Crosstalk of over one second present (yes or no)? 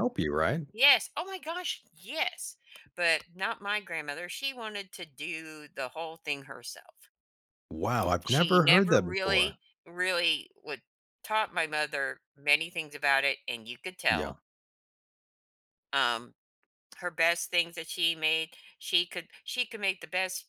yes